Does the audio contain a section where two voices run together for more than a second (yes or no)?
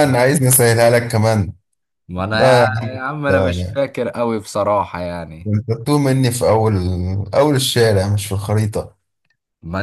yes